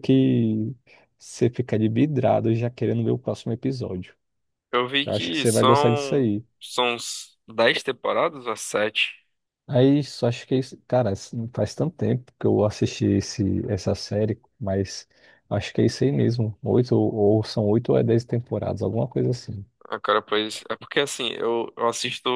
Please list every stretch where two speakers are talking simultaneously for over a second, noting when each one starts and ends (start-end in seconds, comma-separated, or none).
5.0-6.4